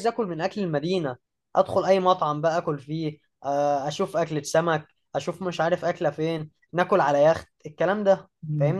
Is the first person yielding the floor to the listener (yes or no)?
yes